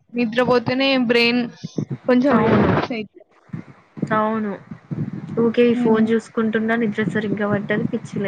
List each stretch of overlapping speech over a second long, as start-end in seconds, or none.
none